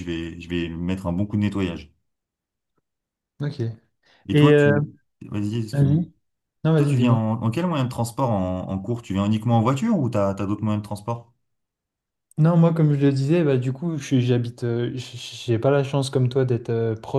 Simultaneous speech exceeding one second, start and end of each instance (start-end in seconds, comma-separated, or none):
none